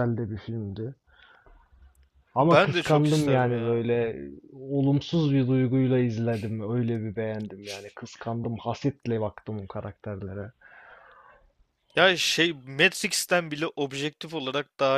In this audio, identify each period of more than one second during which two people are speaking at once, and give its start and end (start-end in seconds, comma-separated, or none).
2.4-3.8